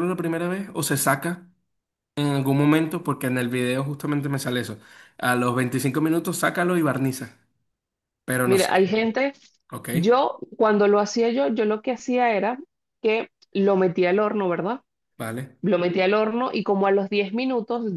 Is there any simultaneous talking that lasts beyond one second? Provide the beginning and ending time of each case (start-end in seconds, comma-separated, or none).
none